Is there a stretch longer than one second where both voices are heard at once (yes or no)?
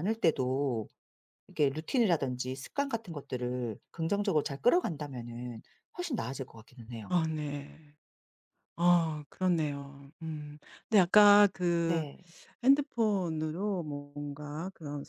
no